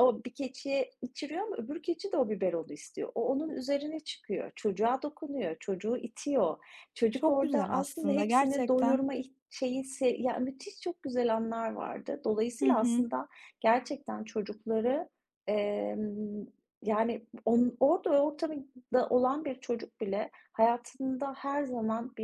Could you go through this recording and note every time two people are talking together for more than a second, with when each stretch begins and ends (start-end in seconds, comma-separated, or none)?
7.1-9.0